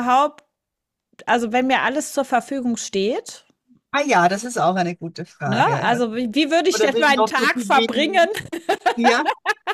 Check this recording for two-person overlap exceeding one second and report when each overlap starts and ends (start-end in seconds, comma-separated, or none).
6.7-8.3